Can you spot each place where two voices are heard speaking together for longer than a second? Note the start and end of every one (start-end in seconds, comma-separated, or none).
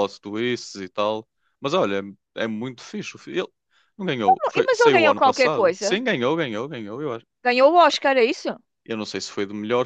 4.5-6.0